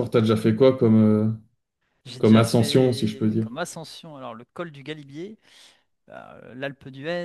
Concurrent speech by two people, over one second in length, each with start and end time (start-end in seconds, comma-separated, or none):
2.2-3.5